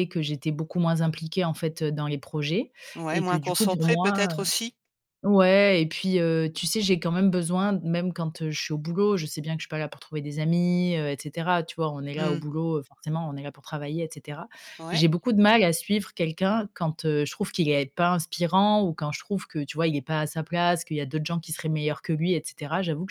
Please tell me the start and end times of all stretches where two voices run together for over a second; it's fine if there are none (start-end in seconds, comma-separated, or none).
3.1-4.5